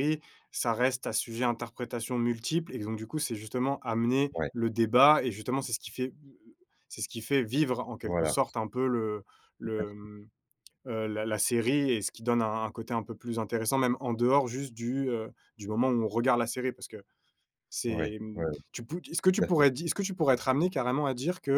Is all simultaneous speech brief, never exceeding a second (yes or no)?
yes